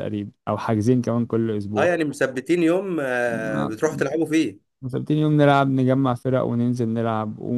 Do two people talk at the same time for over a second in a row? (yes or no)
no